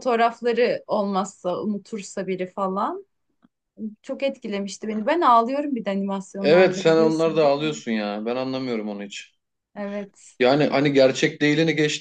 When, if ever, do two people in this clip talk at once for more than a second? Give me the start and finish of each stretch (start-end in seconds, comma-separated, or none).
6.4-7.8